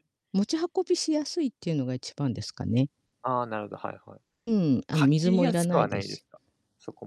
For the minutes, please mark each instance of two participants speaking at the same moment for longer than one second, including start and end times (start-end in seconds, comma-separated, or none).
5.0-6.2